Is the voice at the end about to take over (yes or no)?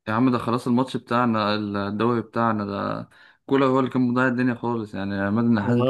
no